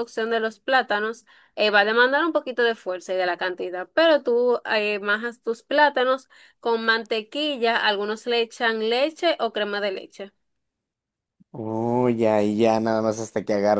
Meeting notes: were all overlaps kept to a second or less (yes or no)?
yes